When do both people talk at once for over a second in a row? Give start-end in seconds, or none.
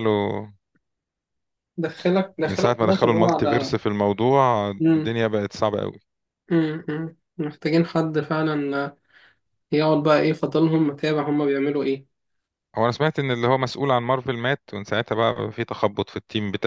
2.4-3.7